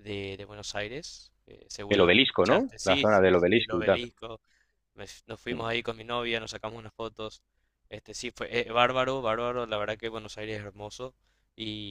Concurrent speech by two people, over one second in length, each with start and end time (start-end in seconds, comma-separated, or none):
1.9-4.0